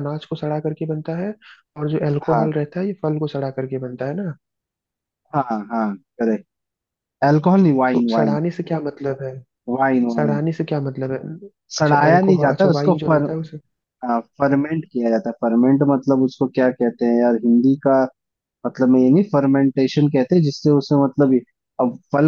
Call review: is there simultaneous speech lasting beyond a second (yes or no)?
yes